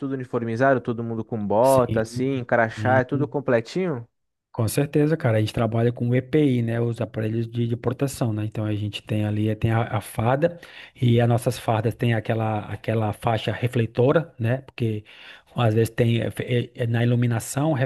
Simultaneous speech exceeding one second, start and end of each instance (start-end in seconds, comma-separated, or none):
1.6-3.3